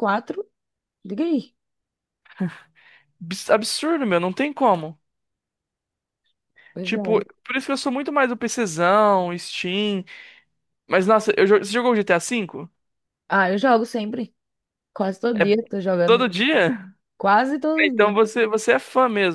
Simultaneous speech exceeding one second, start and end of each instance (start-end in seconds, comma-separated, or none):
none